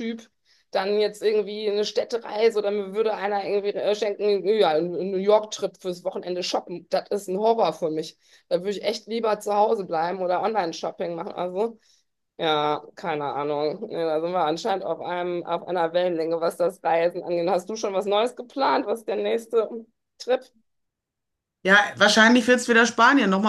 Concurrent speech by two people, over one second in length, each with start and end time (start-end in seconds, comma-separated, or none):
none